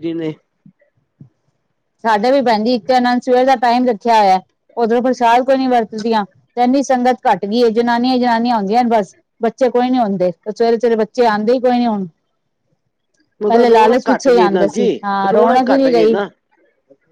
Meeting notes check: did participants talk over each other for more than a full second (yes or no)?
yes